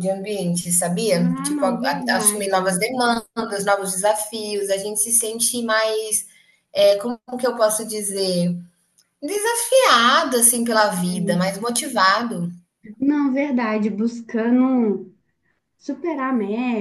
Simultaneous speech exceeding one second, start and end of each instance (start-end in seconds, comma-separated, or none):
1.1-2.9